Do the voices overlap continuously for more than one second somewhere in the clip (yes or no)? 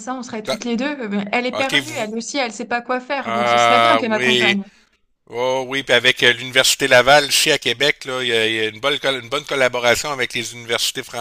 yes